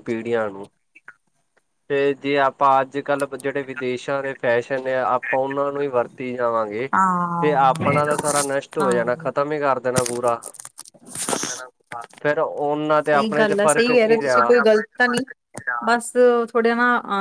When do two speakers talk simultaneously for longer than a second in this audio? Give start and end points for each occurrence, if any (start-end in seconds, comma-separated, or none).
13.1-14.4